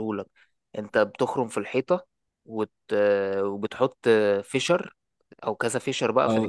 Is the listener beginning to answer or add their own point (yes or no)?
yes